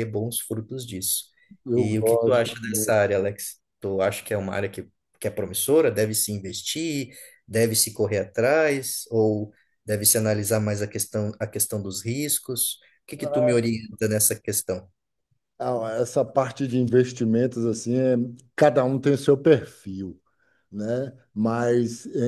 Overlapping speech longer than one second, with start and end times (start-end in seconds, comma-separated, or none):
1.7-3.1